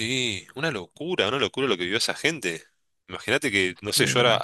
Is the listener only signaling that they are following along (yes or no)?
yes